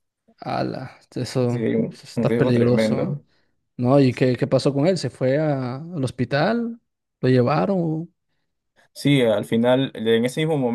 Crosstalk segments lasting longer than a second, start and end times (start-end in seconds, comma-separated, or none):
1.9-3.1